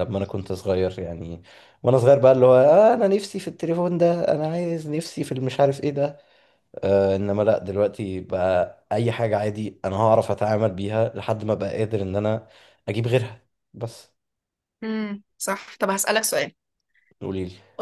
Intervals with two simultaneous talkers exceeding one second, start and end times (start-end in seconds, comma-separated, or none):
none